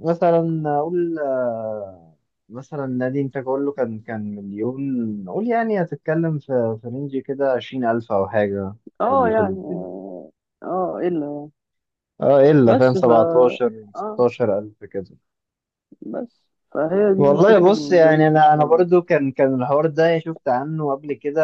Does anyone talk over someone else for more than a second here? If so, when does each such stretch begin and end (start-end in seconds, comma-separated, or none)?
17.2-18.9